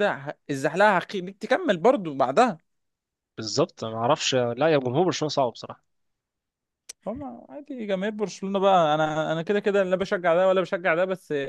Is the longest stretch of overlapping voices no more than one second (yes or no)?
yes